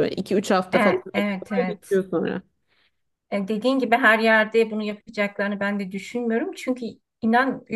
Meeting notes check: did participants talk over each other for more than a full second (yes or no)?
yes